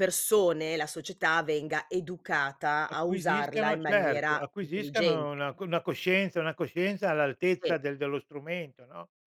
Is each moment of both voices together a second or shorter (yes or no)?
no